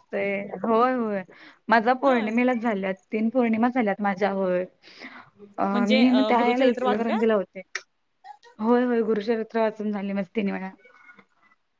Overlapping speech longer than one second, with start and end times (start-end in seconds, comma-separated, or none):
5.7-7.2